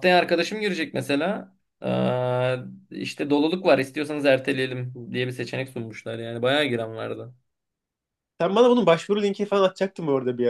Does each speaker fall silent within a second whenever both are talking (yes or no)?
yes